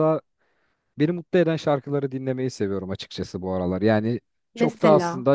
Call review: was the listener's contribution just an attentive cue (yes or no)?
yes